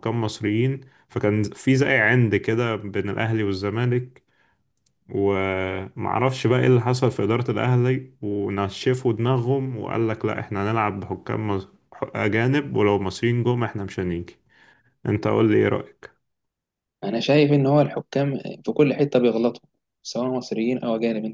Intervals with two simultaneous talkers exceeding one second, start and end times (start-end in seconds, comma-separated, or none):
none